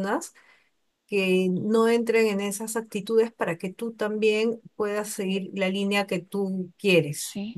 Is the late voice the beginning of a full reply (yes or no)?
yes